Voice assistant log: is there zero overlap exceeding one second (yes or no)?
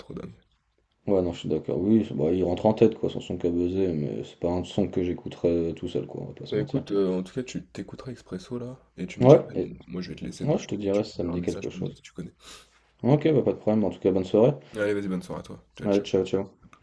no